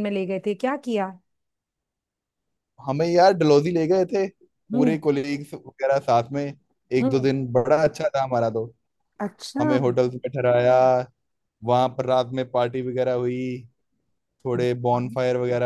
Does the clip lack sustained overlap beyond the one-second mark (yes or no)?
yes